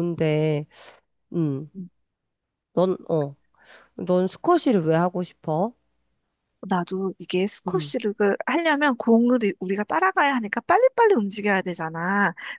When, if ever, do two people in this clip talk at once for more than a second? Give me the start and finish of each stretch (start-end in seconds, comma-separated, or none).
none